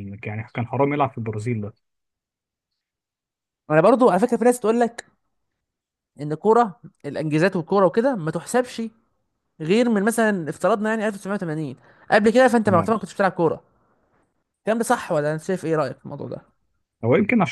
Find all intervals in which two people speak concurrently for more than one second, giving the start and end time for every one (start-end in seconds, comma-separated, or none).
none